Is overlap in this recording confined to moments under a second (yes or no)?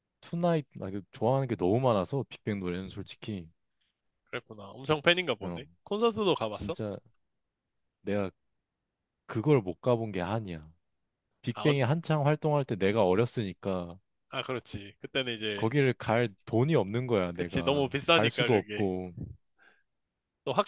no